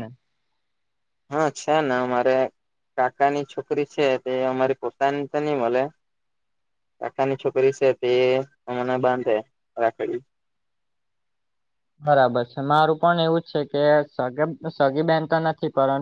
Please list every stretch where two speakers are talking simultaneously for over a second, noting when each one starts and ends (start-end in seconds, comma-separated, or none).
none